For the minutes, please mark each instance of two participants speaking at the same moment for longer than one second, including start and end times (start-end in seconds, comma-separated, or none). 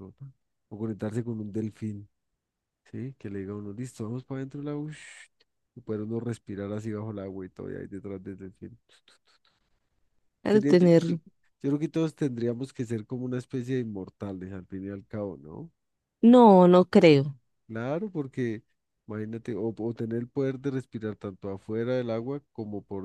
none